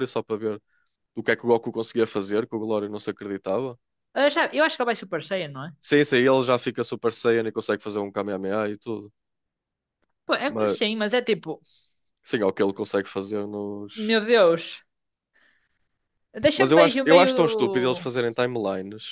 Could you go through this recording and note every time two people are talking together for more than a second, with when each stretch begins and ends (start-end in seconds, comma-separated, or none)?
16.6-18.1